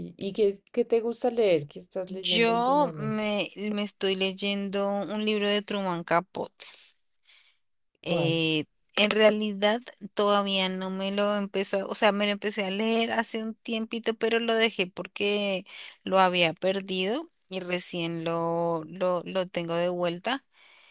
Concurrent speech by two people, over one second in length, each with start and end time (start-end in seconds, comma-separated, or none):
2.0-3.4